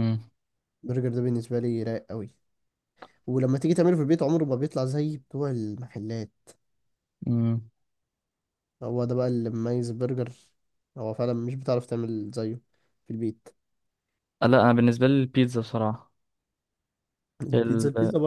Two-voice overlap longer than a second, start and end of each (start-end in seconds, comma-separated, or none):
none